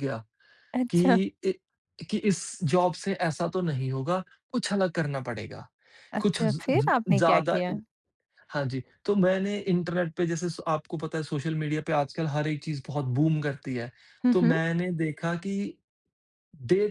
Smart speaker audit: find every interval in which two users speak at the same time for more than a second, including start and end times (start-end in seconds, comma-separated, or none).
6.2-7.7